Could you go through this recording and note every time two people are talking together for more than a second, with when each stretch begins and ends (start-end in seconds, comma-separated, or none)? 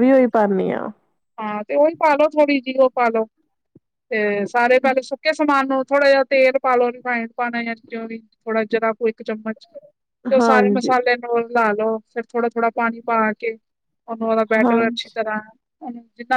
none